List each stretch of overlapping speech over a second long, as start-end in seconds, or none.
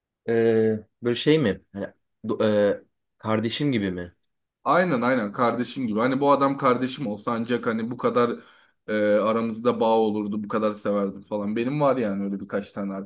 none